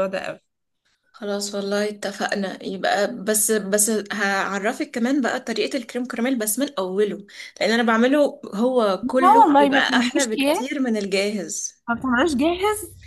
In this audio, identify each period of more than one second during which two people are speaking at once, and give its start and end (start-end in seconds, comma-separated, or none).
9.0-10.7